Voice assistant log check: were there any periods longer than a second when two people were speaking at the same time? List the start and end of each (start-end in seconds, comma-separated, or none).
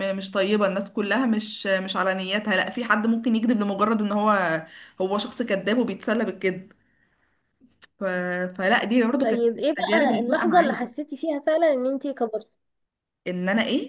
9.2-11.0